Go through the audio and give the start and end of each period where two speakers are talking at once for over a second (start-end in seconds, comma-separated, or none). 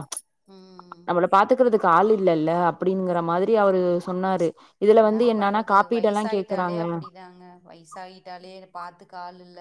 5.0-6.8